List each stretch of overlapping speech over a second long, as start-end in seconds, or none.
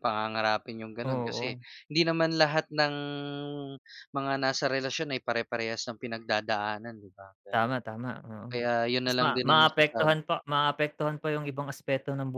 9.0-10.2